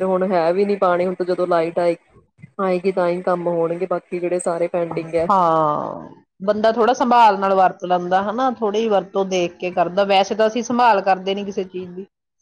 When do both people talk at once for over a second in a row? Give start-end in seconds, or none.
none